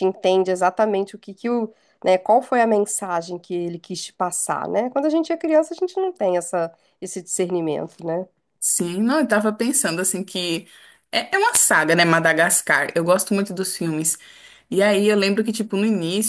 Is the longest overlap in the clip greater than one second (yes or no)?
no